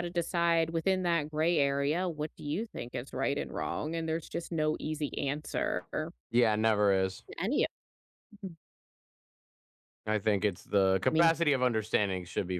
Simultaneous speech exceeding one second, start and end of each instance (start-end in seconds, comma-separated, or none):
none